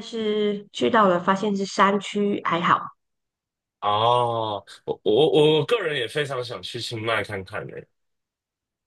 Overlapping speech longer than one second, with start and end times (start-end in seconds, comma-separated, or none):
none